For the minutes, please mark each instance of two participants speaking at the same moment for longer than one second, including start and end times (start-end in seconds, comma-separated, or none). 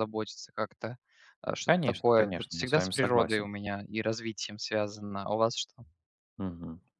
1.7-3.5